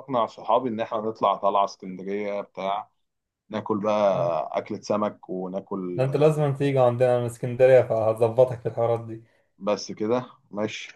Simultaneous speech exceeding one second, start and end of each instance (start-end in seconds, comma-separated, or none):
none